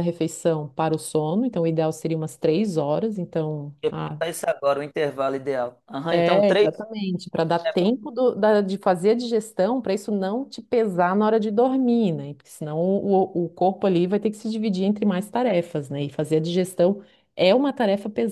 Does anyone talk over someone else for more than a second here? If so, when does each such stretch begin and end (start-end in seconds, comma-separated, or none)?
none